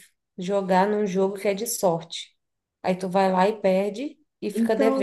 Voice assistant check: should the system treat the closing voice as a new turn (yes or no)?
yes